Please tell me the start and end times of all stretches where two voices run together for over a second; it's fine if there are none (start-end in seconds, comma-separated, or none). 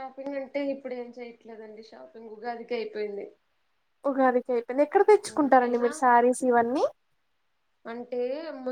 none